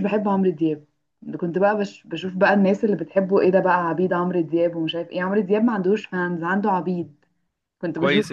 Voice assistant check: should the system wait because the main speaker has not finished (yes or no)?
no